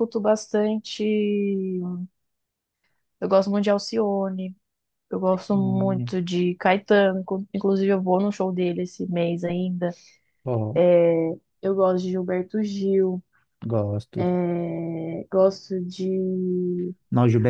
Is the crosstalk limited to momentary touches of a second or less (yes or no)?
yes